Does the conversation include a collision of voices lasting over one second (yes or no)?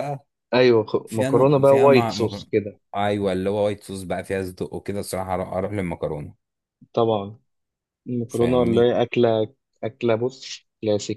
yes